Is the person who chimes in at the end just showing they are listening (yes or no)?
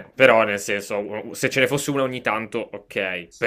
yes